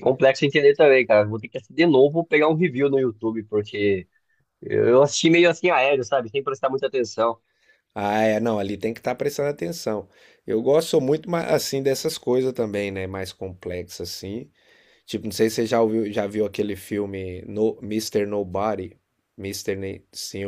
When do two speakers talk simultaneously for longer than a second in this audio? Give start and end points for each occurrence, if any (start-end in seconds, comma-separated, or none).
none